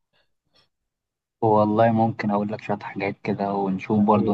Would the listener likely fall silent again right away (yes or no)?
yes